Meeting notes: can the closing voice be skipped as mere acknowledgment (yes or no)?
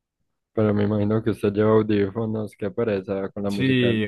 no